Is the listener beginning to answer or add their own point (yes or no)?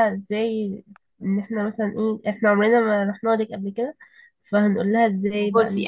yes